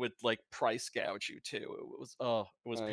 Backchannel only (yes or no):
no